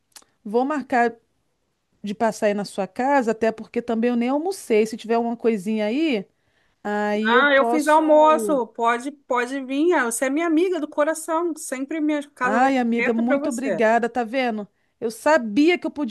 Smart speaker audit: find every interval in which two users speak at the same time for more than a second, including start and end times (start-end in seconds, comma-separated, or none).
7.2-8.6, 12.4-13.8